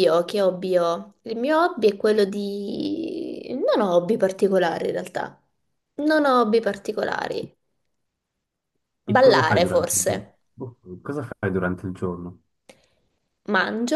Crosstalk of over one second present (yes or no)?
yes